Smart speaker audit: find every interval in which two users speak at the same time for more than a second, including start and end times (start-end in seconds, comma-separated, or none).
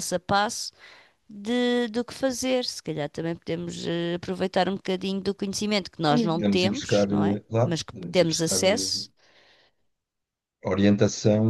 6.4-8.9